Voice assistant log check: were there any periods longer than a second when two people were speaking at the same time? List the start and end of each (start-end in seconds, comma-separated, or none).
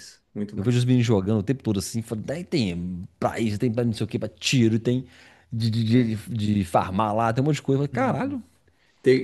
none